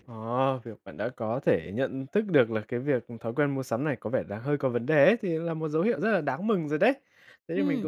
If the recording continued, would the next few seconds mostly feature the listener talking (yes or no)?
no